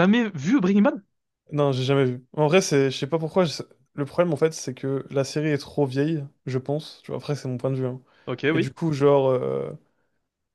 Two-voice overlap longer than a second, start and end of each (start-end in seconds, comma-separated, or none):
none